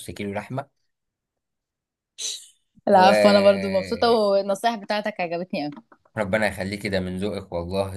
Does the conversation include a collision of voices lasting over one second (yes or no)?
yes